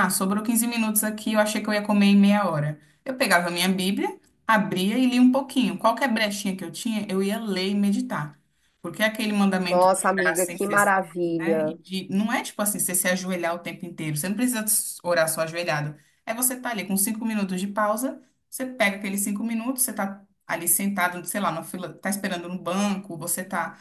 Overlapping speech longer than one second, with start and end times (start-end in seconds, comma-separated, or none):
9.7-11.8